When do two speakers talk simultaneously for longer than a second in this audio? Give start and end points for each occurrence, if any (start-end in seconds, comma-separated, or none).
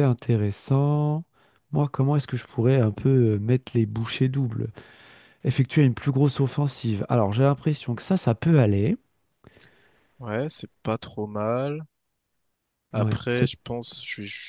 none